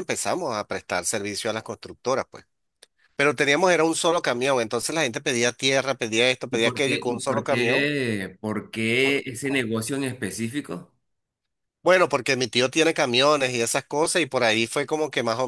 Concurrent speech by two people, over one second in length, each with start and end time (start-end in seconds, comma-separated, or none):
6.5-7.9